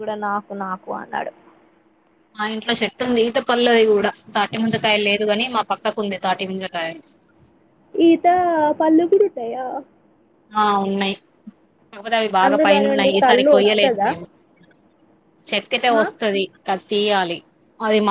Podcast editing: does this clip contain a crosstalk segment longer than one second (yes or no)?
yes